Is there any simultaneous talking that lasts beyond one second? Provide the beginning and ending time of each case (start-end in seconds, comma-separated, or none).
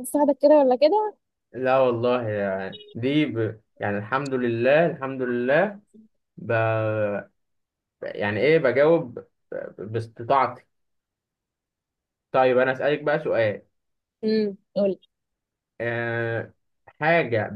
none